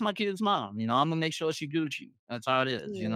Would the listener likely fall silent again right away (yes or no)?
no